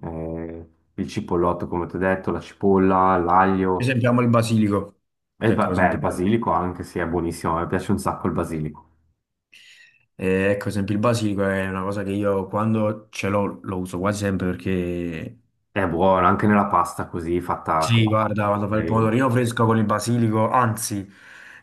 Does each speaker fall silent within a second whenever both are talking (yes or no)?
no